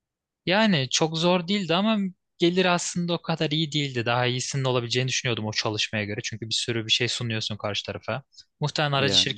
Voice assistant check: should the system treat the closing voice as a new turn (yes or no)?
no